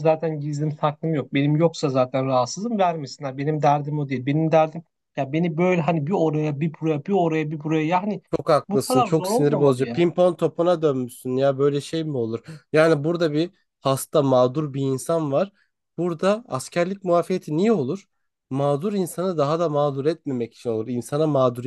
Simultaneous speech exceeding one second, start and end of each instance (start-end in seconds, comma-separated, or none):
8.7-10.1